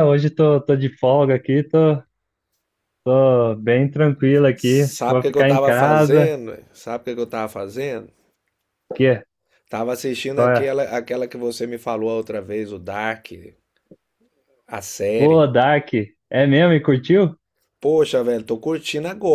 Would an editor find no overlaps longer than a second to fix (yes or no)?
no